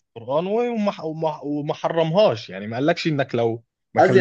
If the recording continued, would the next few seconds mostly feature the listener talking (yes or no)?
yes